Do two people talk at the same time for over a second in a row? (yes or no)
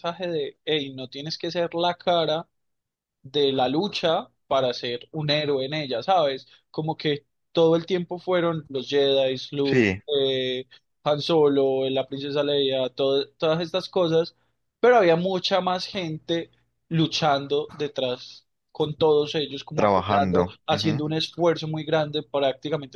yes